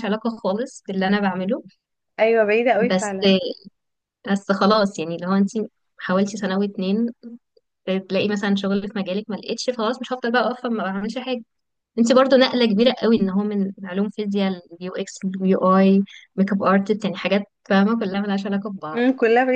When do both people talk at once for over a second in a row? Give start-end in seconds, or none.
none